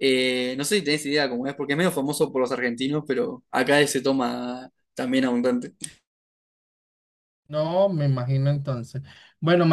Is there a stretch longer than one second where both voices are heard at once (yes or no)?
no